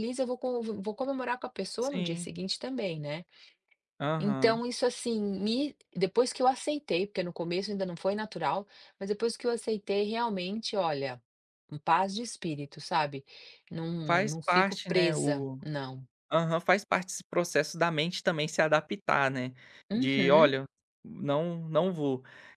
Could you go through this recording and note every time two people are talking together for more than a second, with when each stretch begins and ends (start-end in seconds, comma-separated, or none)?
14.1-15.6